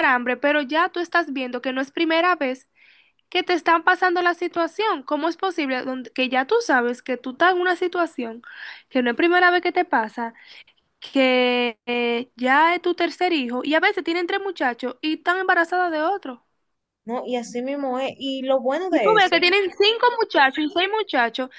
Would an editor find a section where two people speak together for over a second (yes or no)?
no